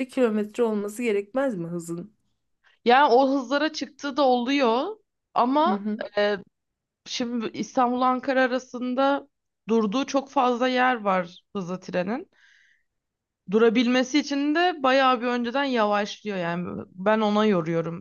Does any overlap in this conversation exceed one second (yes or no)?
no